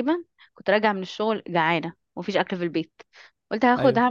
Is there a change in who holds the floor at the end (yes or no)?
no